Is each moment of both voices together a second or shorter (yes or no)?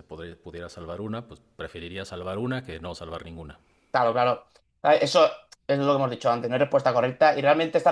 yes